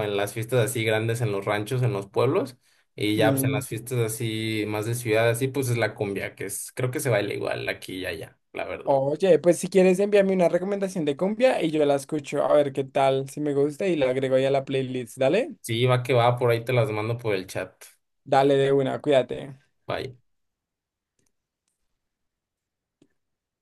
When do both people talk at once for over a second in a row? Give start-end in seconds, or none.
none